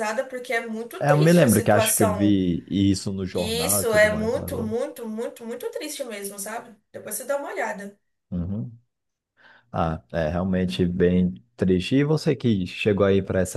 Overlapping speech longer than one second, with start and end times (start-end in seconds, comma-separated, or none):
1.0-2.4, 3.3-4.8